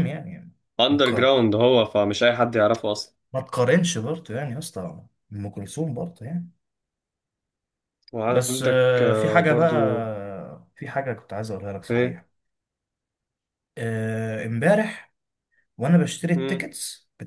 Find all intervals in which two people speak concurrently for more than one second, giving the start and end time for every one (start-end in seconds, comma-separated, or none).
8.3-10.1